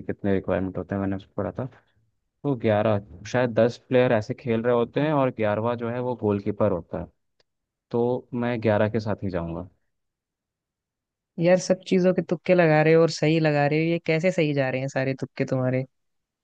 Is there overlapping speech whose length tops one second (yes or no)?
no